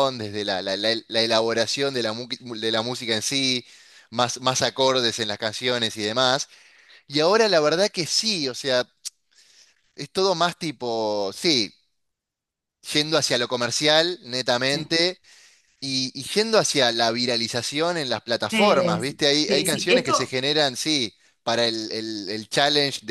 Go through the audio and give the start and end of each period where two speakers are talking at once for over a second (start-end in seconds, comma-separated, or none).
18.5-20.3